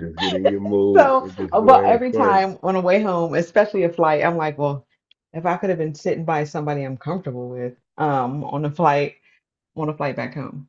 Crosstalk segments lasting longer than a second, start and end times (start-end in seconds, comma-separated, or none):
0.9-2.4